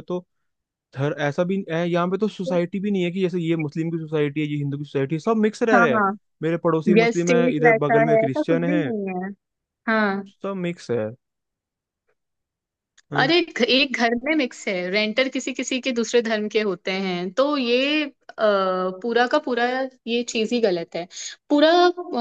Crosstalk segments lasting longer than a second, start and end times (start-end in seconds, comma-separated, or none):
7.0-8.9